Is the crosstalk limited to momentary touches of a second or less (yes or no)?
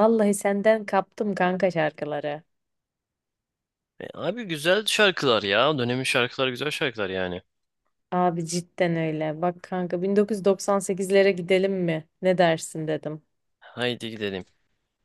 yes